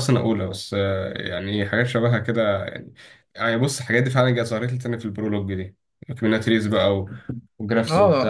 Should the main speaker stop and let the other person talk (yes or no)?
yes